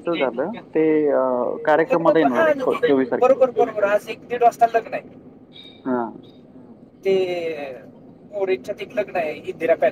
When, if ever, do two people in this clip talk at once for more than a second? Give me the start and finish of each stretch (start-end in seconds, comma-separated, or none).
none